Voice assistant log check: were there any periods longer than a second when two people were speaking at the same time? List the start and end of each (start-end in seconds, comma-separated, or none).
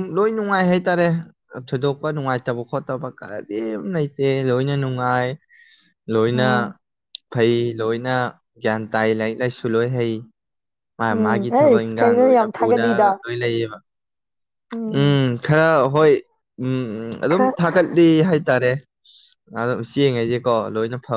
11.2-12.8